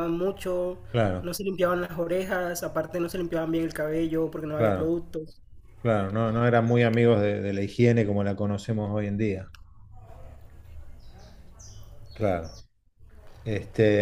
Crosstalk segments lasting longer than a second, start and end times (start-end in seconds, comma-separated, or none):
none